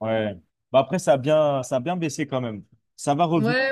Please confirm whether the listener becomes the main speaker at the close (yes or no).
yes